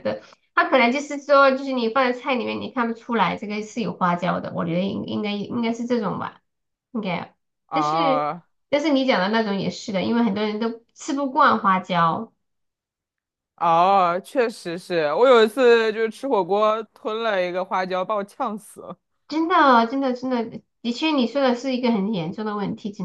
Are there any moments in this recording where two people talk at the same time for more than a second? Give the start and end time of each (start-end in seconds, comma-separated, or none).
none